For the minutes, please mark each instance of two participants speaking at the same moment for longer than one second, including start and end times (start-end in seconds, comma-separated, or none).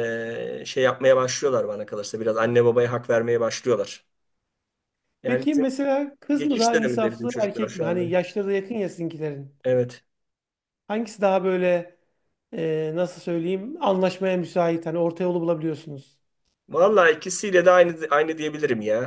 6.3-8.0